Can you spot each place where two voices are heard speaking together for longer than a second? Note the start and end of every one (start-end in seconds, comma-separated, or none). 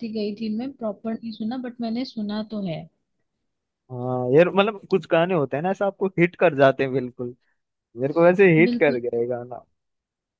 none